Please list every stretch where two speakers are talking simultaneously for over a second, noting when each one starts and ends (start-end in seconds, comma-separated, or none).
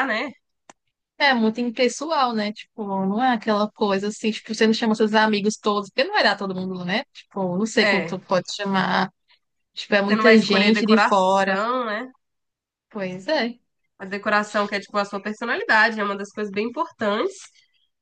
10.1-11.6